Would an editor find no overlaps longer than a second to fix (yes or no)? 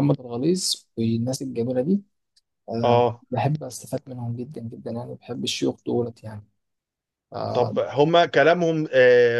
yes